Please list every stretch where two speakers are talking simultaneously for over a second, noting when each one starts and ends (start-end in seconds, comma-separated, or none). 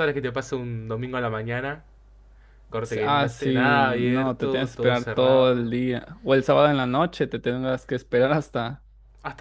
2.8-5.7